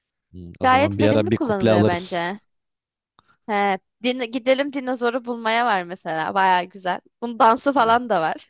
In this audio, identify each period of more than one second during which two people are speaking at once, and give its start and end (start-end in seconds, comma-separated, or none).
0.6-2.3